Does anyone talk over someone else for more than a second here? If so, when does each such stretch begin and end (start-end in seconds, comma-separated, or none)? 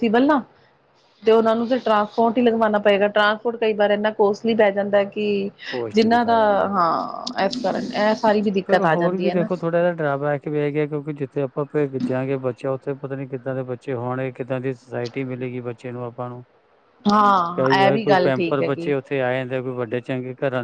17.6-18.9